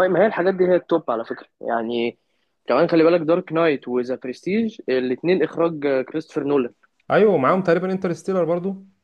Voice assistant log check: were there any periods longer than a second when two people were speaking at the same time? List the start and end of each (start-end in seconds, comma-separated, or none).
none